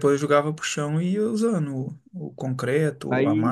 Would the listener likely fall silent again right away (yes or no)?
no